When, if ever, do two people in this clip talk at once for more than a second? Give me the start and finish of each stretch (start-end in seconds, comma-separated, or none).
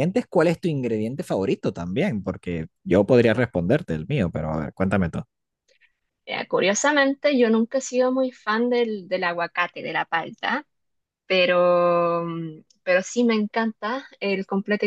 none